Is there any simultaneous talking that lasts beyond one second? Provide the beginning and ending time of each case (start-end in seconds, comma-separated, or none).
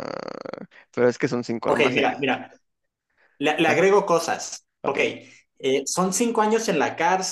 none